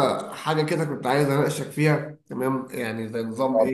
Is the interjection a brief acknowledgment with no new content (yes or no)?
yes